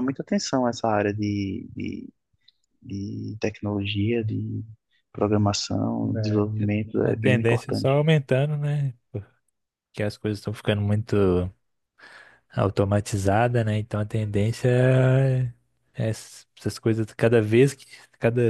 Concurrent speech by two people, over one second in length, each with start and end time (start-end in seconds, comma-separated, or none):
6.6-8.0